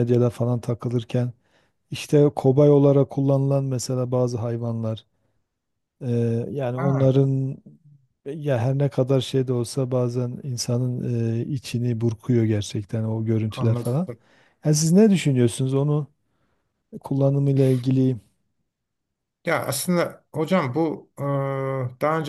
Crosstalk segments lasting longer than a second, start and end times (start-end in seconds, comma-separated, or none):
none